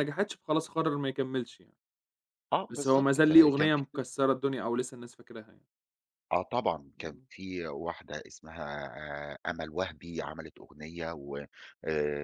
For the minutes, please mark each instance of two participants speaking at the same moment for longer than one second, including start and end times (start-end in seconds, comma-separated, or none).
2.7-4.0